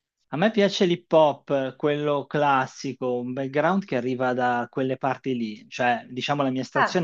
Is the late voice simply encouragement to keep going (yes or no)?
yes